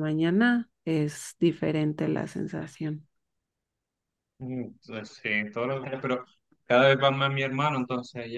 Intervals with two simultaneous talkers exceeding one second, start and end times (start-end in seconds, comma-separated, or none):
none